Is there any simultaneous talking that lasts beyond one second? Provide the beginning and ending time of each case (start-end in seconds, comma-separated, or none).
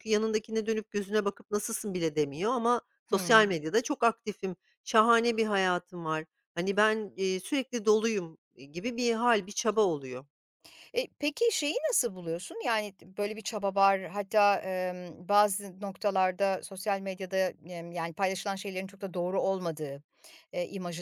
none